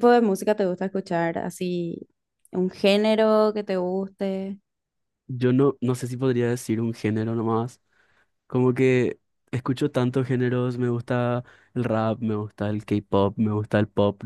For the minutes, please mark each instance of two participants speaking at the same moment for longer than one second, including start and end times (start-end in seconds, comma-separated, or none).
none